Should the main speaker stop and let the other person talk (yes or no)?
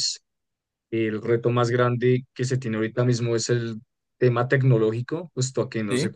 no